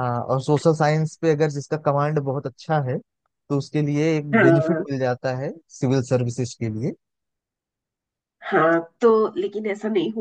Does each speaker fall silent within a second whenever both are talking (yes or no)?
yes